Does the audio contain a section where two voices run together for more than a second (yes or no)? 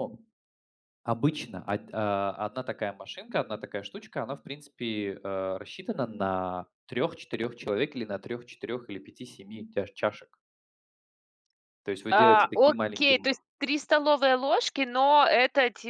yes